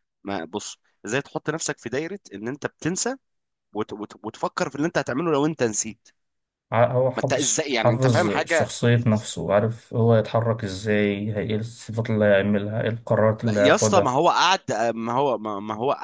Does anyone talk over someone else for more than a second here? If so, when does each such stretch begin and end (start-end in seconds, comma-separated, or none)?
7.2-8.7